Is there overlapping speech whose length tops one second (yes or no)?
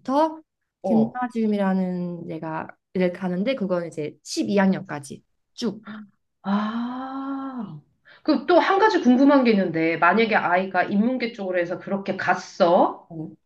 no